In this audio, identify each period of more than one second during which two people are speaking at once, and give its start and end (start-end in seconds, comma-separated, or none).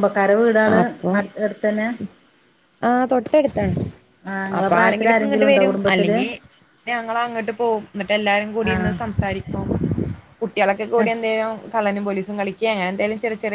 4.6-6.2